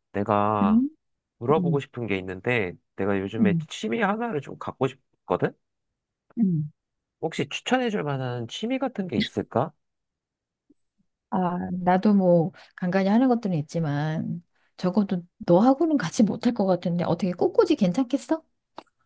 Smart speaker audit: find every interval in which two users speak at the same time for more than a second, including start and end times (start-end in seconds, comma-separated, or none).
none